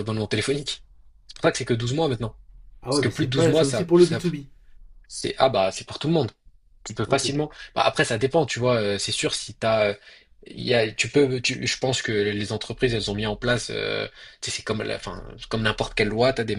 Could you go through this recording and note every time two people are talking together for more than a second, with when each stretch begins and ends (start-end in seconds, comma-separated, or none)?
2.9-4.2